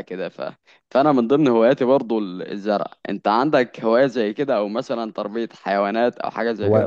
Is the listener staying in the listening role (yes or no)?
no